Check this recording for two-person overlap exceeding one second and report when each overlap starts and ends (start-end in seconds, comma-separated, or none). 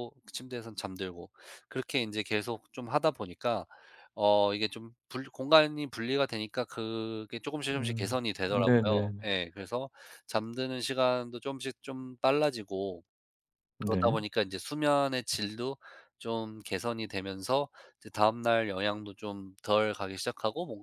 7.7-9.3